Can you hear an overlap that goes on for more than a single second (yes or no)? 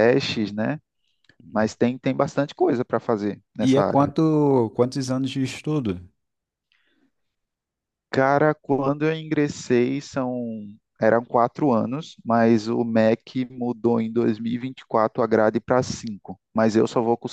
no